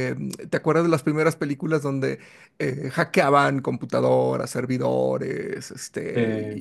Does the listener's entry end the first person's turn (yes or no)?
no